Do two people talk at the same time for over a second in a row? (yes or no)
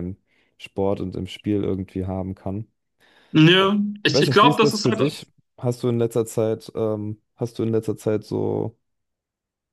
yes